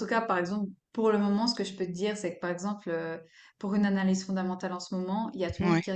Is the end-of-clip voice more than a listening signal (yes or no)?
no